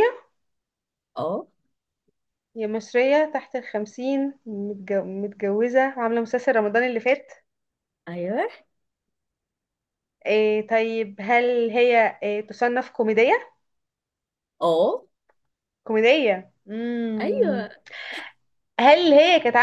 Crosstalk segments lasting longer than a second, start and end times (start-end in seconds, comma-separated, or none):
none